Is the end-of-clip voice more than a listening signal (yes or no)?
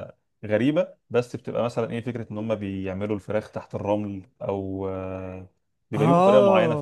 yes